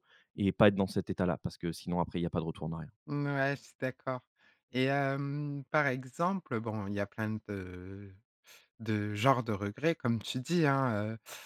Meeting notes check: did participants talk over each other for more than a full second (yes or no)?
no